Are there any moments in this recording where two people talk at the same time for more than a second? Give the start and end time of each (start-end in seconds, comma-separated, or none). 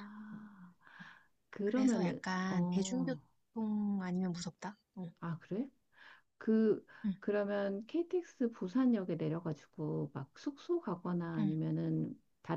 1.6-3.2